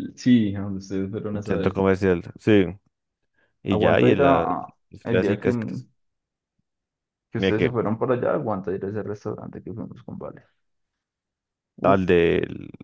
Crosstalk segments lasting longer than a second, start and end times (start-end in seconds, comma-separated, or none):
none